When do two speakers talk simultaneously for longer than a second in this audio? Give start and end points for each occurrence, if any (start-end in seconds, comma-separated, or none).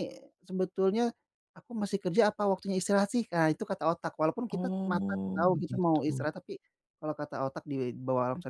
4.5-6.2